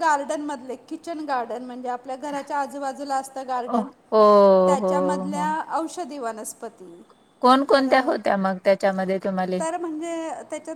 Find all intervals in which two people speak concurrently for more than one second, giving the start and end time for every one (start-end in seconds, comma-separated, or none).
none